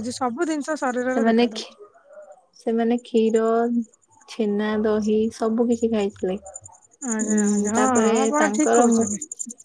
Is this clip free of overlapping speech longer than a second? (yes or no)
no